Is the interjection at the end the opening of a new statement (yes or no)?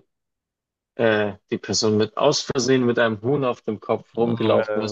no